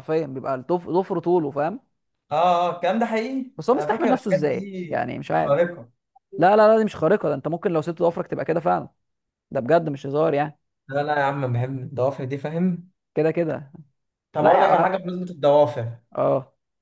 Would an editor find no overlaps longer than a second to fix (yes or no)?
no